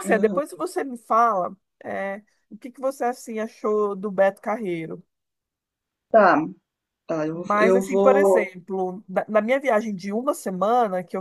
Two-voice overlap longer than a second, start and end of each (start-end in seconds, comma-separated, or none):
7.3-8.5